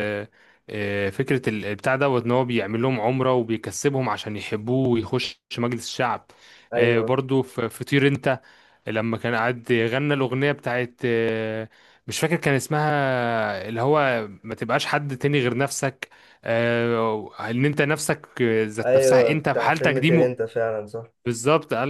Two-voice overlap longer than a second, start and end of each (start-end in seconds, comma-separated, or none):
18.8-20.1